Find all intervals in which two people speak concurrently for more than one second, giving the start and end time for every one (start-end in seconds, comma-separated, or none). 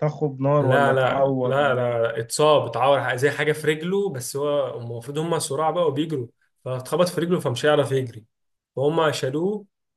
0.6-2.1